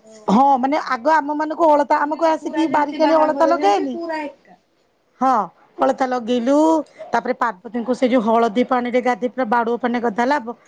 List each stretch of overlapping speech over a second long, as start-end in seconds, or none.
2.0-3.9